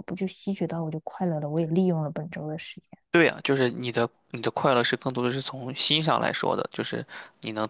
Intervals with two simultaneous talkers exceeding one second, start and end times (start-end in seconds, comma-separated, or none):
none